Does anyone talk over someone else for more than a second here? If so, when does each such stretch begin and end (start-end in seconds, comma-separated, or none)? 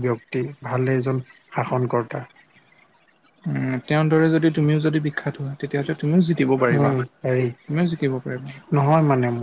none